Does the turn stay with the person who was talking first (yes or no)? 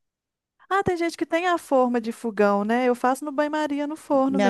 no